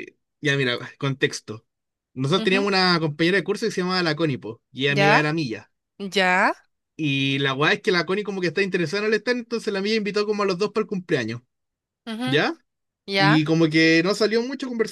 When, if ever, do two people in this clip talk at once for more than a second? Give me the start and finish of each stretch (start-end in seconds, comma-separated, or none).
none